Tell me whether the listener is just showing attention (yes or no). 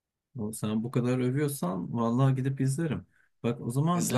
yes